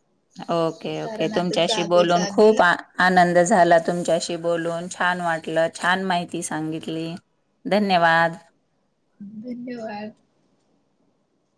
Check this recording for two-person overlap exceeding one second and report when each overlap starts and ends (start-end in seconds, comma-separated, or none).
1.0-2.5